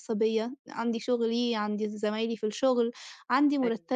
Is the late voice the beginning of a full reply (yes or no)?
no